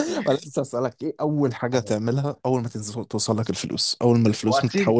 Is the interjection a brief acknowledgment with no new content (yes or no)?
no